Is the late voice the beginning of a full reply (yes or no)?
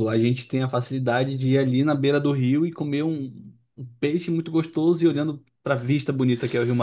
yes